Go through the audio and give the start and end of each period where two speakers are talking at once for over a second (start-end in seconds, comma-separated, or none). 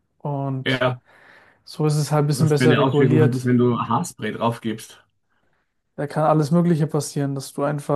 2.3-3.5